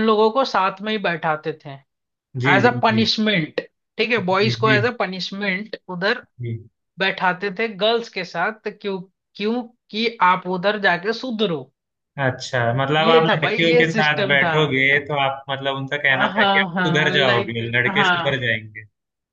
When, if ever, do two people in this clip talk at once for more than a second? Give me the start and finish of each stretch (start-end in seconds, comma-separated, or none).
13.0-14.5, 16.1-18.5